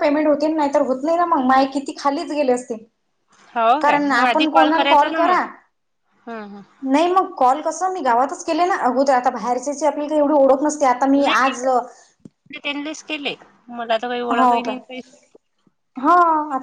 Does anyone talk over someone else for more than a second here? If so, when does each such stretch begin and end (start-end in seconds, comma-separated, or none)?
3.8-5.3